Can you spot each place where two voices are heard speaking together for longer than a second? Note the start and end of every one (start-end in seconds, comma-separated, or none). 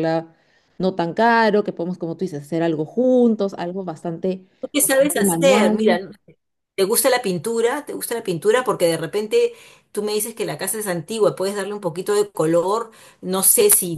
4.6-6.0